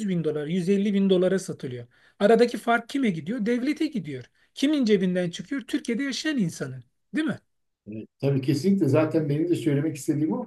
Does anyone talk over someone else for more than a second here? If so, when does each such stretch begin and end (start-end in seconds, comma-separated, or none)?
none